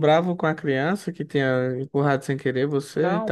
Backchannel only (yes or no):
no